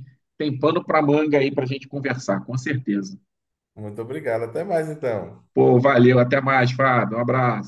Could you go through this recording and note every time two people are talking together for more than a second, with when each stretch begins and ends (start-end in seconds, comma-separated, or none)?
none